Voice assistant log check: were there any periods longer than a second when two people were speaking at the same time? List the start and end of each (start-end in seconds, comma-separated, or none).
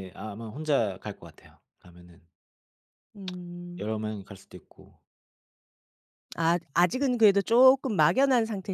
none